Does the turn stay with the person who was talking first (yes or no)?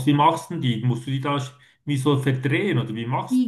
no